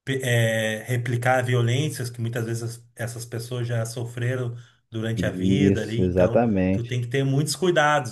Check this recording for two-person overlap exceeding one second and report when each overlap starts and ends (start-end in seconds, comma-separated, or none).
5.1-7.0